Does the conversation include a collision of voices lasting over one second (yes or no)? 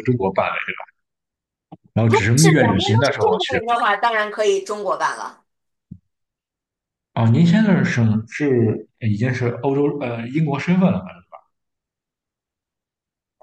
yes